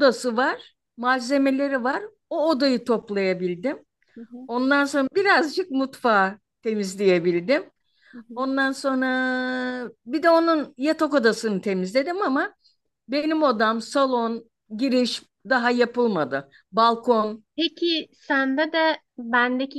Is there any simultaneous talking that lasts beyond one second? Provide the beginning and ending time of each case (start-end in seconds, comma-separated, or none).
none